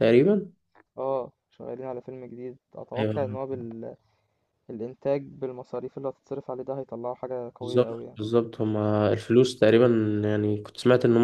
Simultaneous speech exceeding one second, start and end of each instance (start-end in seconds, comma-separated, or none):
none